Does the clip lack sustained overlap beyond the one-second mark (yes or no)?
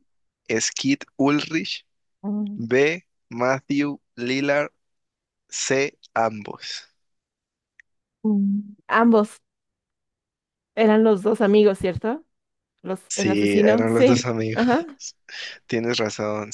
no